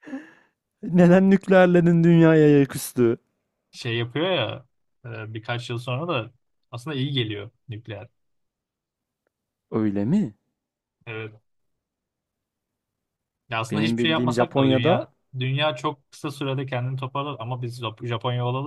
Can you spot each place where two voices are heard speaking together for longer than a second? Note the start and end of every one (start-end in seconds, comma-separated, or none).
13.7-15.1